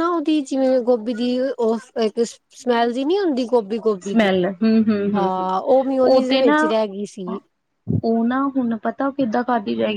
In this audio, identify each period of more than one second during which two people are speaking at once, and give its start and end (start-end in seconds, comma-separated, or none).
none